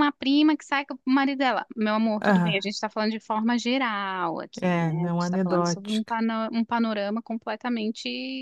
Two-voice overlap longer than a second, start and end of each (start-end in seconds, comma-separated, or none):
4.6-6.1